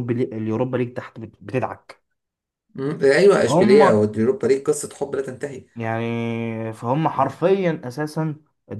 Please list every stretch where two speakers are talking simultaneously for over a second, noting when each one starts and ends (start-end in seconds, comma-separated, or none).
none